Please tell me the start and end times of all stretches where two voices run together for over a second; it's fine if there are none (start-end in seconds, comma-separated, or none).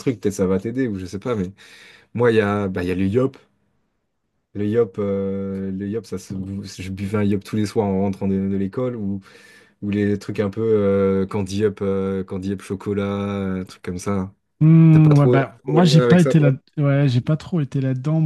14.9-16.5